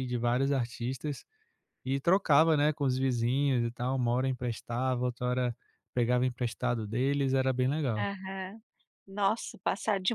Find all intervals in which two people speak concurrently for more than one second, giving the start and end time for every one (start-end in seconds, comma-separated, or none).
none